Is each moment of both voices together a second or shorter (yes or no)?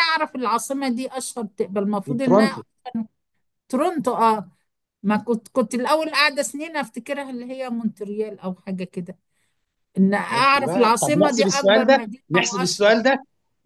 no